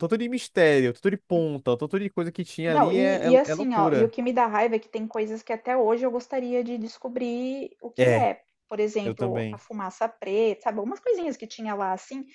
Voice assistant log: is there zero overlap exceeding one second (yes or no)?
no